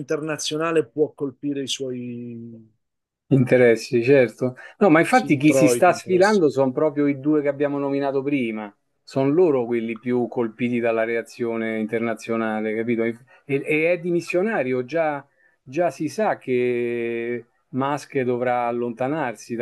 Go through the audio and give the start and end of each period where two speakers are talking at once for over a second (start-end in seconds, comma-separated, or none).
5.1-6.4